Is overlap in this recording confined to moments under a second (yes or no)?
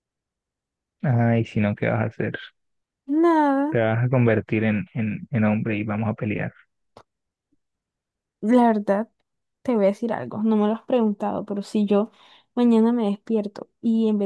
yes